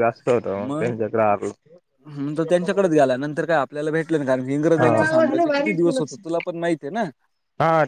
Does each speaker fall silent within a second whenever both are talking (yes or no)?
no